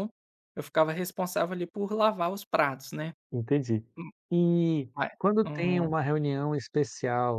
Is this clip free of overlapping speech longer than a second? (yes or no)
yes